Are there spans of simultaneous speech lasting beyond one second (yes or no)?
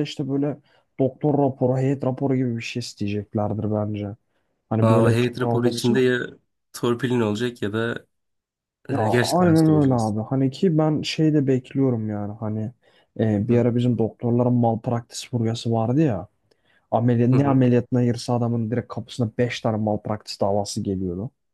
yes